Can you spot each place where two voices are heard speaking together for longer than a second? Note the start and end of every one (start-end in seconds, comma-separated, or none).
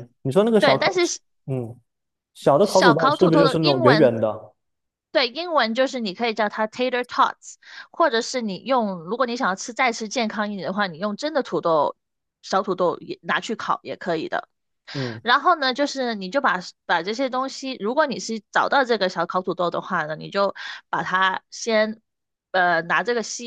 2.6-4.2